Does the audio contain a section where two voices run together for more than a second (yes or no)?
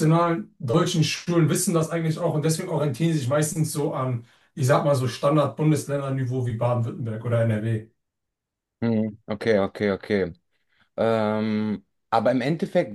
no